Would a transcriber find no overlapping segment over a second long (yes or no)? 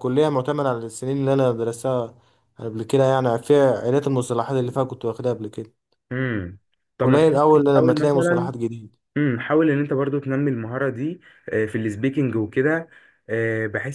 no